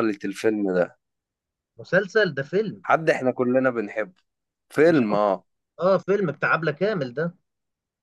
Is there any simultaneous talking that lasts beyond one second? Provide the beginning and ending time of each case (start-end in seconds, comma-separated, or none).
none